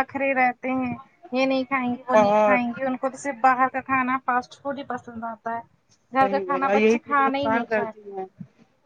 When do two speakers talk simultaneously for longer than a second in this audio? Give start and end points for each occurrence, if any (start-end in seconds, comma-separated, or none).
6.2-8.1